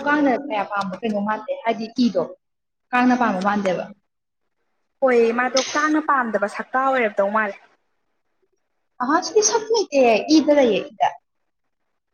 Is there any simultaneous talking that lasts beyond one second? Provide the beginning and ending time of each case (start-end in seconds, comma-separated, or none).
none